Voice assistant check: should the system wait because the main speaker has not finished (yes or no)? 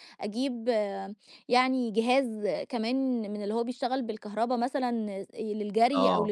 yes